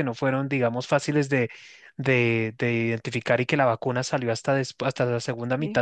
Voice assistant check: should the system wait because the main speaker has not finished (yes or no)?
yes